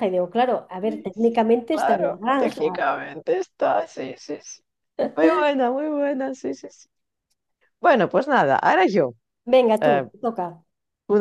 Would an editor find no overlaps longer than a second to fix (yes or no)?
no